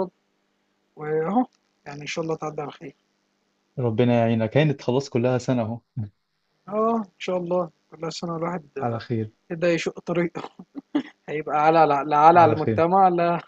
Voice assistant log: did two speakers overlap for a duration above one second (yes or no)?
no